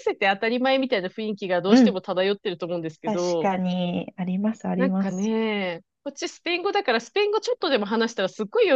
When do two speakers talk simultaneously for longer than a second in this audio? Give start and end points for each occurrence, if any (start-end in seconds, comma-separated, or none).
none